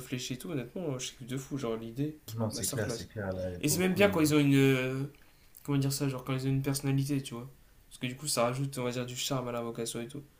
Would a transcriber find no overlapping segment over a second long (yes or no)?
yes